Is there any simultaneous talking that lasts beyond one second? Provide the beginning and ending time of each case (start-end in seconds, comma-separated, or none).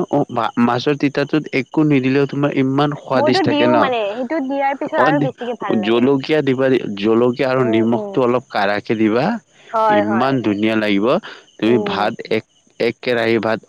3.2-5.0